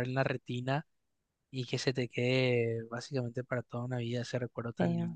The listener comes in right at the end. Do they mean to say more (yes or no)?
no